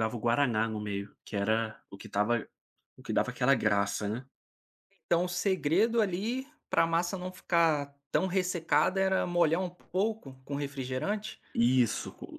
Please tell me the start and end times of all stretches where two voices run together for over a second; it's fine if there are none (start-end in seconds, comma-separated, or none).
none